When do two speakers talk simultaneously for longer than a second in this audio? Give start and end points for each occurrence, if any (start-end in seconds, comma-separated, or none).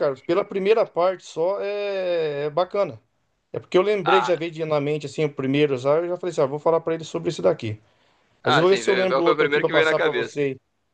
8.4-10.4